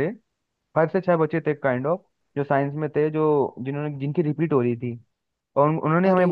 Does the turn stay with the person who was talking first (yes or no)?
yes